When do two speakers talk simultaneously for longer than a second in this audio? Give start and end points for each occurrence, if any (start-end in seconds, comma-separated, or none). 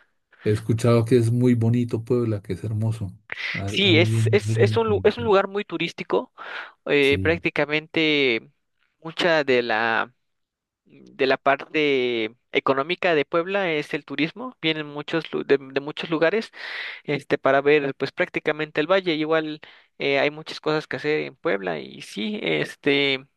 3.7-5.3